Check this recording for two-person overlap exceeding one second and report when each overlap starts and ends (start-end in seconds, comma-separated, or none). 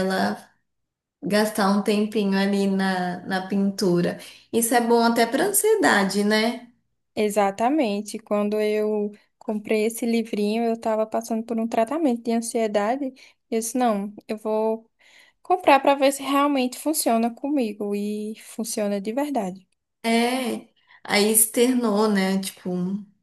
none